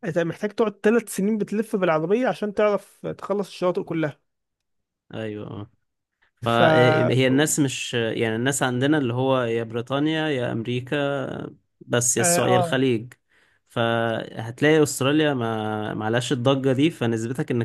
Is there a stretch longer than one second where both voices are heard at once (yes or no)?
no